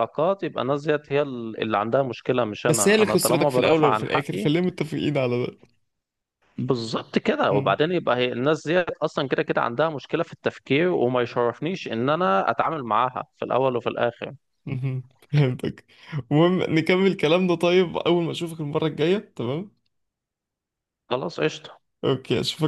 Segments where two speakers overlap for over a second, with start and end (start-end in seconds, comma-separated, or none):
2.7-4.5